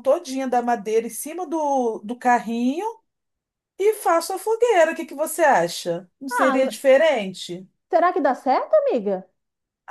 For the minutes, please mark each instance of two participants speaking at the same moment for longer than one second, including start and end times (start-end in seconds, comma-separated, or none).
none